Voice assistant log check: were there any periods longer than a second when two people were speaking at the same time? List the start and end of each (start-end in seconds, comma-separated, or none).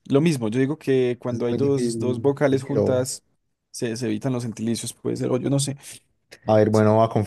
1.3-3.1